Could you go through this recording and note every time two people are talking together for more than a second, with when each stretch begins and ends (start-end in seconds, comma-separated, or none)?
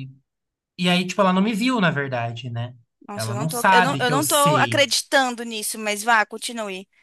3.1-4.9